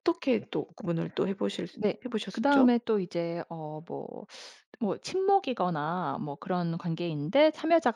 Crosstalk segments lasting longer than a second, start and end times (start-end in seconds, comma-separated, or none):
none